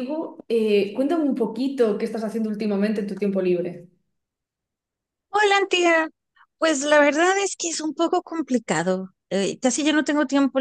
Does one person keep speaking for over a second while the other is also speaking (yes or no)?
no